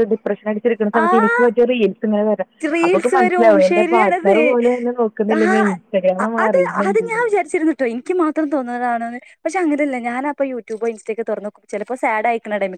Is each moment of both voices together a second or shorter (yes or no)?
no